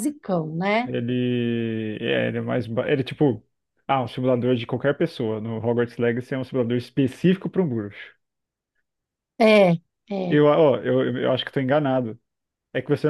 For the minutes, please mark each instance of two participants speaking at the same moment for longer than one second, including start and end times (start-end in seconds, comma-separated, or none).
none